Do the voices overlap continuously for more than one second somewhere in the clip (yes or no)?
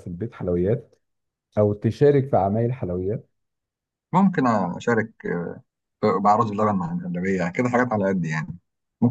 no